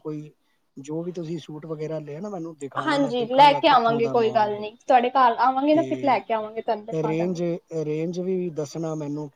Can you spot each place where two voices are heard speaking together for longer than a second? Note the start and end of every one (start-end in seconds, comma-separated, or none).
2.9-4.6, 5.7-7.4